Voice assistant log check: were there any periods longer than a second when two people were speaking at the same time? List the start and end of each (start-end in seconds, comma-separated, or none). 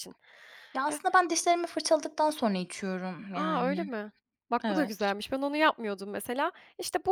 none